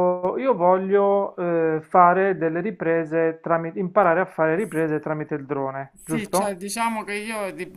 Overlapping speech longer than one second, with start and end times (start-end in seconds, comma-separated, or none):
none